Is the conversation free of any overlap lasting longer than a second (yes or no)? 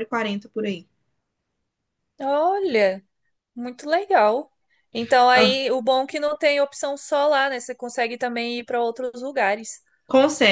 yes